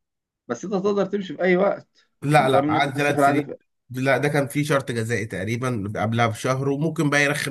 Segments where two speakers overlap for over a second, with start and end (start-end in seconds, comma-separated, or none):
2.2-3.5